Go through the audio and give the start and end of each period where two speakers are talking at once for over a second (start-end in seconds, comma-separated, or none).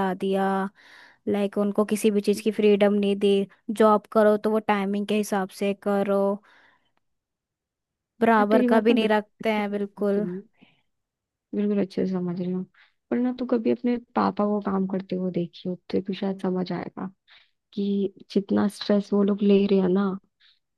8.4-10.3